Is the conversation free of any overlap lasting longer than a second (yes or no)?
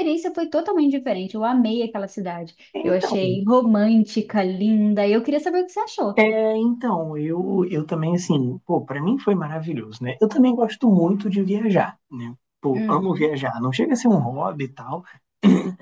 yes